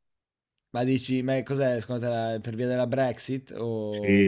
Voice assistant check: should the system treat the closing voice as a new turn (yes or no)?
yes